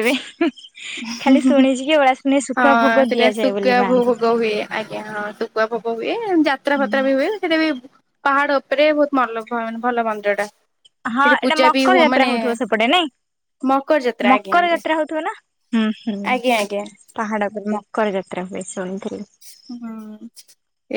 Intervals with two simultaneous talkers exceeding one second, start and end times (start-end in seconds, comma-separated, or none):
2.6-4.2